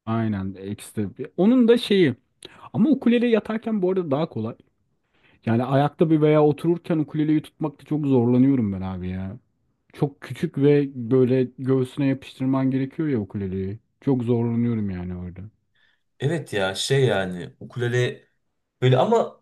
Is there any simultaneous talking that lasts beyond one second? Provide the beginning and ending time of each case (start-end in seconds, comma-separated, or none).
none